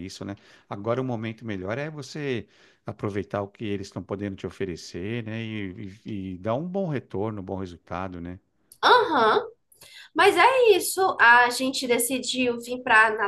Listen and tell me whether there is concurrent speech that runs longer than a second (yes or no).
no